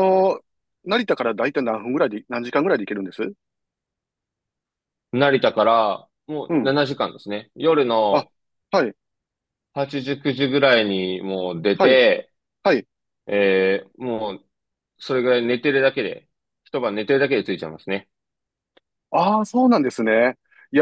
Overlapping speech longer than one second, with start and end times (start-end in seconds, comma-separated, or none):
none